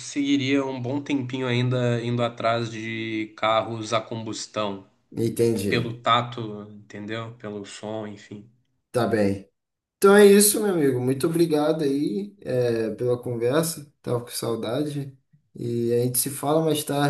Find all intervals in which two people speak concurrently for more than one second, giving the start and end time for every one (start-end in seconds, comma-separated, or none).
none